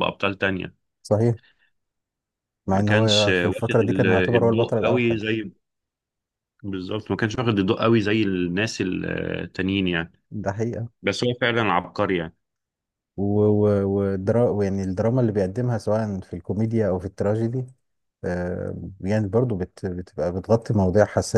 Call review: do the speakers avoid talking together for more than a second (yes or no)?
no